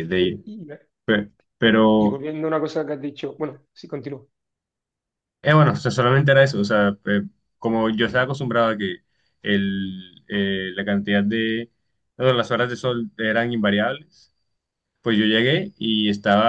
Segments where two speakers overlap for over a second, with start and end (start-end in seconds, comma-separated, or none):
none